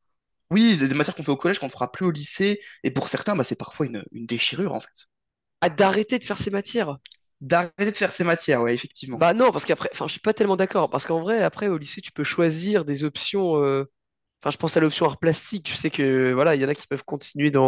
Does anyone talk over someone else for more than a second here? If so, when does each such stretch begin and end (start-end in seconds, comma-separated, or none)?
none